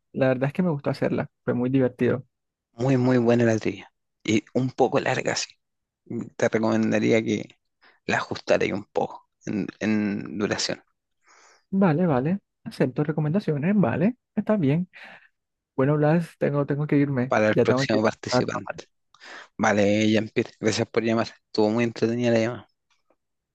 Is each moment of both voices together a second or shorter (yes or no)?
no